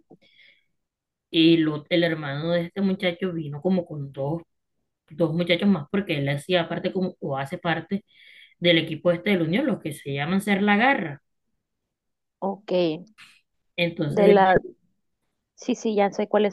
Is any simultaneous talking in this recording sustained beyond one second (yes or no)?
no